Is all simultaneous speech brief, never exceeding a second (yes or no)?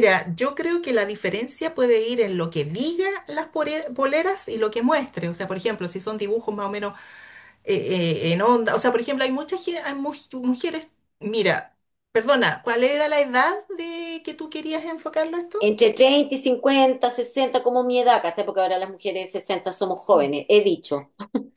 yes